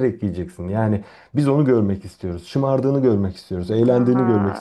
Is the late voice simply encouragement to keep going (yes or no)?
no